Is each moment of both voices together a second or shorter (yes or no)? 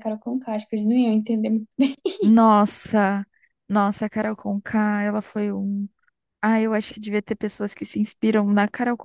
yes